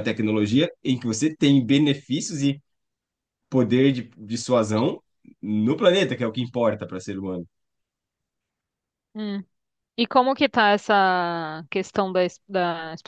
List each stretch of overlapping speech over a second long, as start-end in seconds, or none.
none